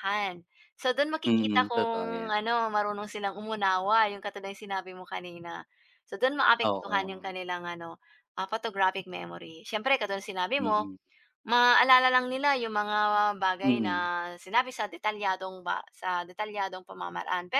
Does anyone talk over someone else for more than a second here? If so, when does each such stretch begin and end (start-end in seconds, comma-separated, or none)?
1.3-2.5